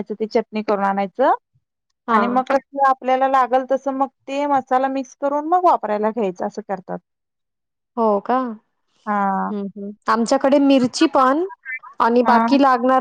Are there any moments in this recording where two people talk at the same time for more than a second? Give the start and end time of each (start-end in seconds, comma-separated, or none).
none